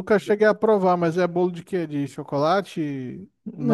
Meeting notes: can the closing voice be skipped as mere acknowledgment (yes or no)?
no